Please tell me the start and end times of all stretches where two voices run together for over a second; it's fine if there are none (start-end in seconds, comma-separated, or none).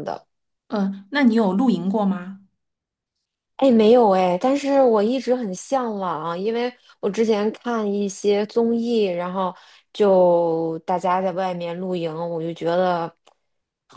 none